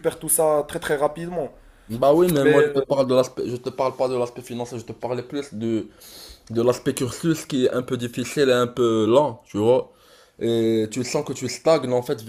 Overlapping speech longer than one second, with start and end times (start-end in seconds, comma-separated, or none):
none